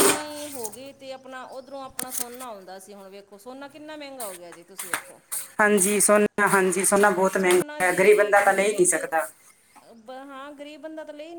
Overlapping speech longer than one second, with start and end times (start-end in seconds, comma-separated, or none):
7.3-9.0